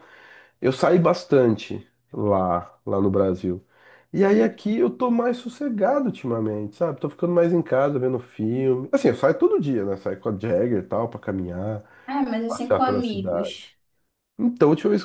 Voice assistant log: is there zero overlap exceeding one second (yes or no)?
no